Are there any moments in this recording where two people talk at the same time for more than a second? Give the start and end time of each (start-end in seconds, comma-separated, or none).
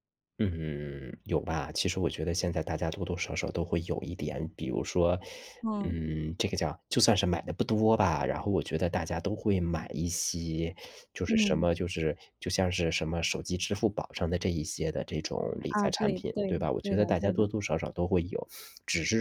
15.7-17.5